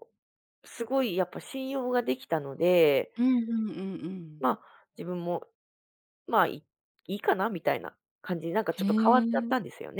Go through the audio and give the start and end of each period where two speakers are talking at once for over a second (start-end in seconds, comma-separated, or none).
none